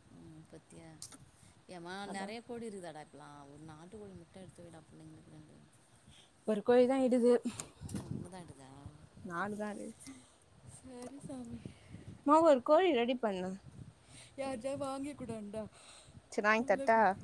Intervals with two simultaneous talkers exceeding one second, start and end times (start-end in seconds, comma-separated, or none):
none